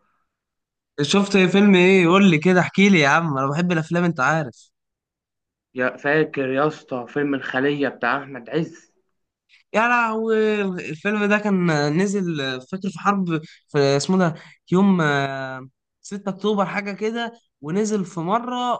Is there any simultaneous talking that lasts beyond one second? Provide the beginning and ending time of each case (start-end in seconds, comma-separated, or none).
none